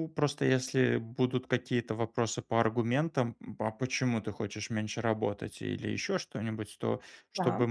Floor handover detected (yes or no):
no